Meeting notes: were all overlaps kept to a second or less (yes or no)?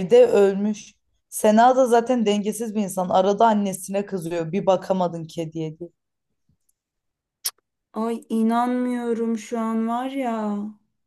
yes